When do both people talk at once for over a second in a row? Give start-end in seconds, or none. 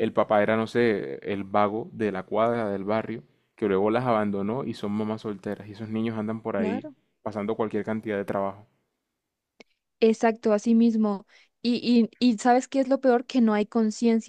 none